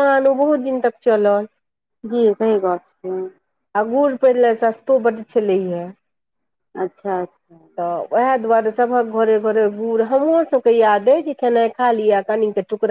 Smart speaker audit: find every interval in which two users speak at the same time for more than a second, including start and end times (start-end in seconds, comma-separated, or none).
none